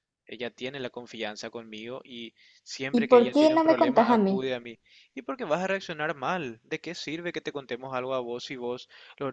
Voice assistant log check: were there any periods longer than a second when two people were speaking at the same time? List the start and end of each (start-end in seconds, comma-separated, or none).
2.9-4.5